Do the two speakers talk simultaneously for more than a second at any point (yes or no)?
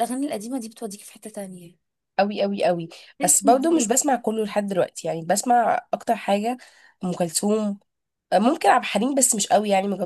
no